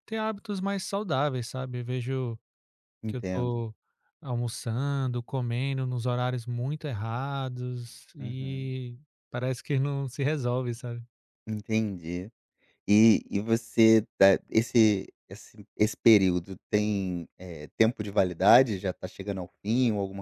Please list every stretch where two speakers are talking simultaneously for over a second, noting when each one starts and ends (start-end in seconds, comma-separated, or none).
none